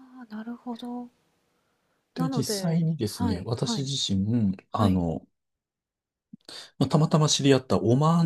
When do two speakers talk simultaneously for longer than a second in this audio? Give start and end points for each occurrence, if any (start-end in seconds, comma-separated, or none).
2.2-3.9